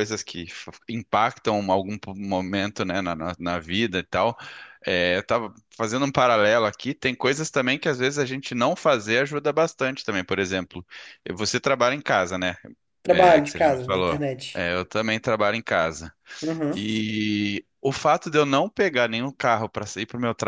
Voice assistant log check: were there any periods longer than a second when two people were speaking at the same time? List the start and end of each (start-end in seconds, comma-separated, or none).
13.1-14.6